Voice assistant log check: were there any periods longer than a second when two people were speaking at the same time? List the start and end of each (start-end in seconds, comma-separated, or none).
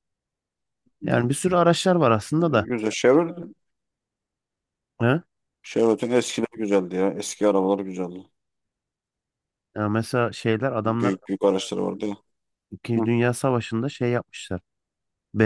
none